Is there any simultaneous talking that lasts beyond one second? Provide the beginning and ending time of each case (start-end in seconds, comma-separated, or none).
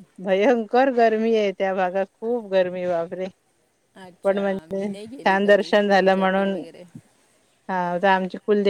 4.2-6.6